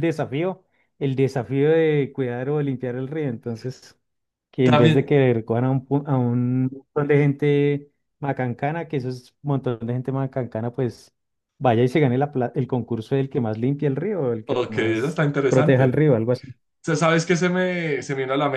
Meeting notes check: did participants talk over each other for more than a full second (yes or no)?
yes